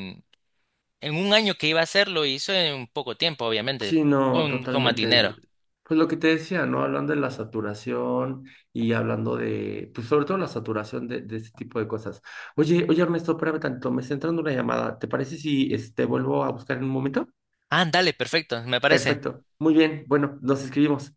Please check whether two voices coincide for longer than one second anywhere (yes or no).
yes